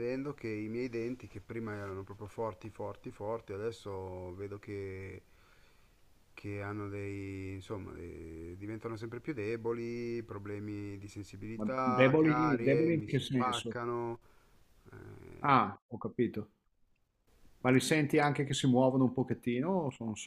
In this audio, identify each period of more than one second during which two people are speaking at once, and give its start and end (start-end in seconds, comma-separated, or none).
11.6-13.8